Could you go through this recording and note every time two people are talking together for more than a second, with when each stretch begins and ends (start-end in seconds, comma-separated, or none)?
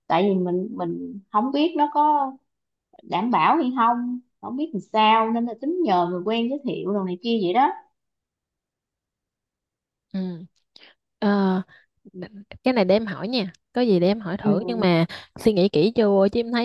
none